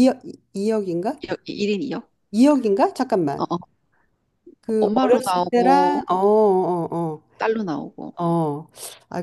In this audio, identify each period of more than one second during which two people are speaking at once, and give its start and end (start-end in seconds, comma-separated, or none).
4.8-6.0